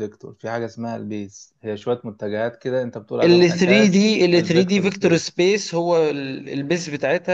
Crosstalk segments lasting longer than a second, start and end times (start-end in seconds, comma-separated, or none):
3.2-5.3